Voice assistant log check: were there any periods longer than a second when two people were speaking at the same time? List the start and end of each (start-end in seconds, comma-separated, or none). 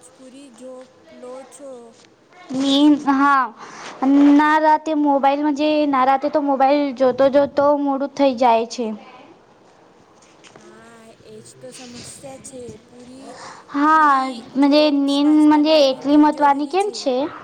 14.7-16.9